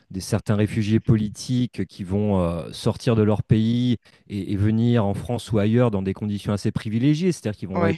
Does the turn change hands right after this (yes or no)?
no